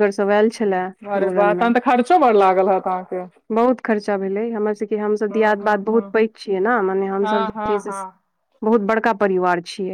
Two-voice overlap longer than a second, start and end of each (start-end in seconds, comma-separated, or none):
none